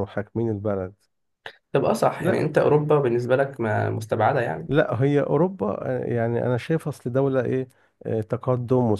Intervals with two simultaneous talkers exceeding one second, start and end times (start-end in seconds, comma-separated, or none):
none